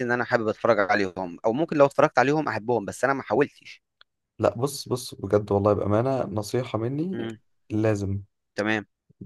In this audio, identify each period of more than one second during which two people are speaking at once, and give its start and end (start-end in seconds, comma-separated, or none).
none